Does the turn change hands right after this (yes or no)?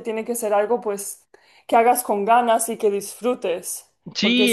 yes